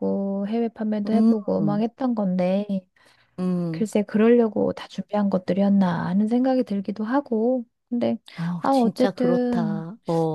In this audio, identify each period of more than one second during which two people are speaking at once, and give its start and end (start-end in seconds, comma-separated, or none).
8.6-9.8